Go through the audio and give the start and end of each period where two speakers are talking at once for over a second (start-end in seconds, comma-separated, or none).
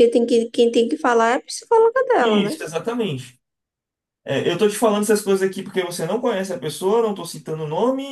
none